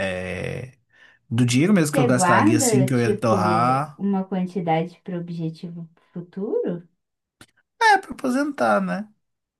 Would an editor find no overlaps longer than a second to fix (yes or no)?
no